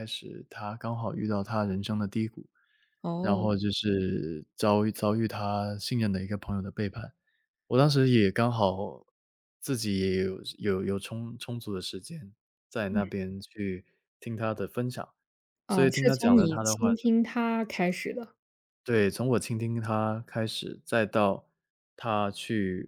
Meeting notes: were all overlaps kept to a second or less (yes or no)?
no